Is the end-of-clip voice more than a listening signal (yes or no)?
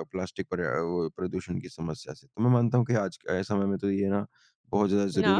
no